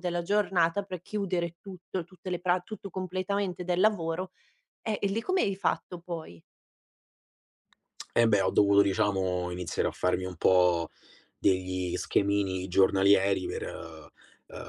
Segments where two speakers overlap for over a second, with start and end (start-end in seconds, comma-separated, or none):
none